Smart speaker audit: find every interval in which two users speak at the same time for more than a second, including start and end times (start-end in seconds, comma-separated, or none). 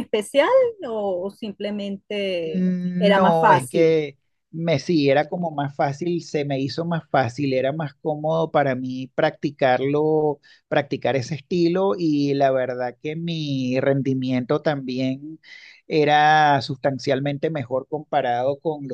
2.5-4.0